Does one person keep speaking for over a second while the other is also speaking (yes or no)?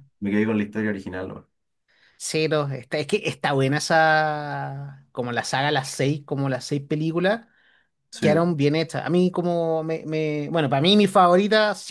no